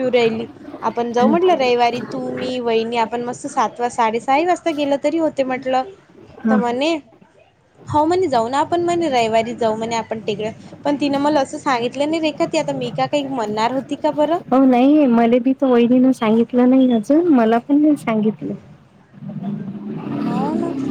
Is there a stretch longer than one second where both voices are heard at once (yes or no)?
no